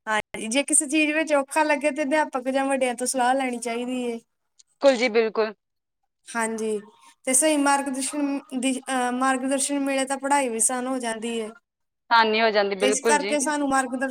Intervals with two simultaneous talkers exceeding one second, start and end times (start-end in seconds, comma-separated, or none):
none